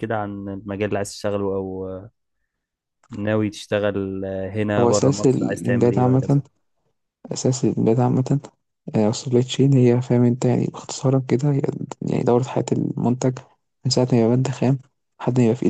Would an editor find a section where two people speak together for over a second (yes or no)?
yes